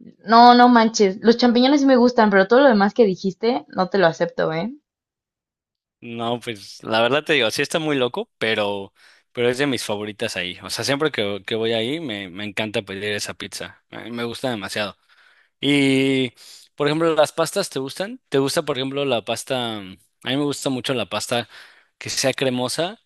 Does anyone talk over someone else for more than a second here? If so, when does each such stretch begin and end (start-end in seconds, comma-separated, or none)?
none